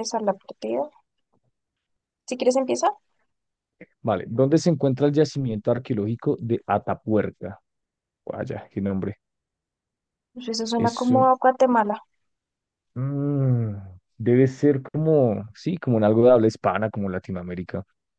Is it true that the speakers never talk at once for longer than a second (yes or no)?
yes